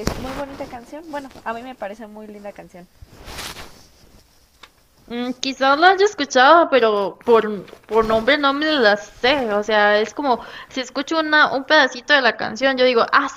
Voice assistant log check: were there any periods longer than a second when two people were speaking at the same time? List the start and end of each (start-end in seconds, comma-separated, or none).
none